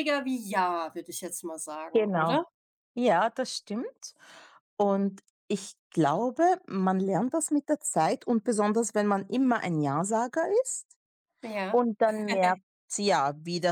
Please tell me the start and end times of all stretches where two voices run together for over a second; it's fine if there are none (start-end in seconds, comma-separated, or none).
none